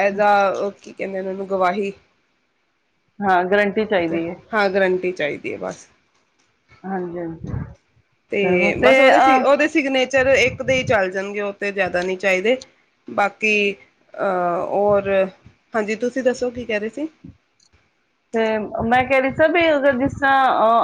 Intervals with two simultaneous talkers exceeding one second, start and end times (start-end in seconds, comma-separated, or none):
none